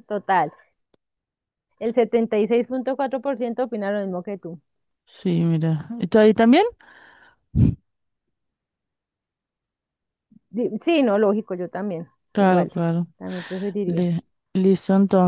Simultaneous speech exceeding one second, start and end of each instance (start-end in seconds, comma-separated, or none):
none